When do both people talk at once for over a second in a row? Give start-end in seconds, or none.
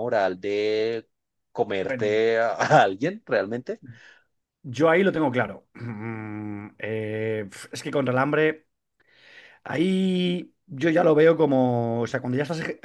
none